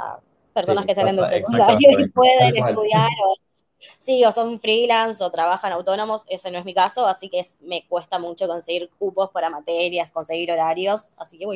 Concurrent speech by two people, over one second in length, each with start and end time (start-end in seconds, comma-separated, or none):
0.7-2.9